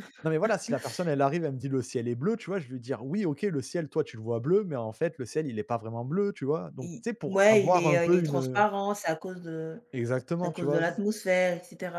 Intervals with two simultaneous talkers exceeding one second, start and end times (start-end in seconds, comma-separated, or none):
6.8-8.6